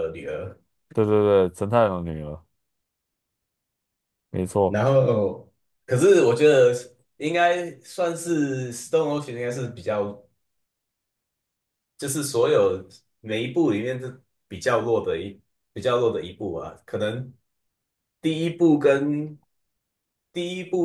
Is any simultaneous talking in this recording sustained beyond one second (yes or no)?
no